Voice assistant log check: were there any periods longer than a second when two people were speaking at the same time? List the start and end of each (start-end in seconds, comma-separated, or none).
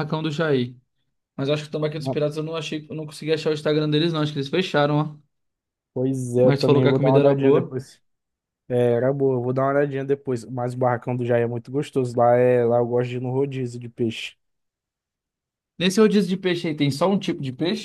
6.4-7.8